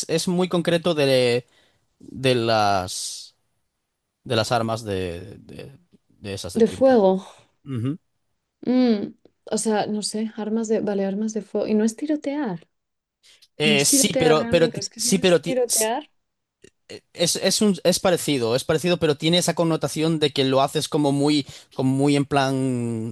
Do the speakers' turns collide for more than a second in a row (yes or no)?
yes